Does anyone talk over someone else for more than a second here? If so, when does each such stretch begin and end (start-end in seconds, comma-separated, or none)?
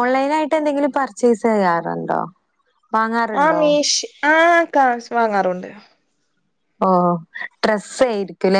none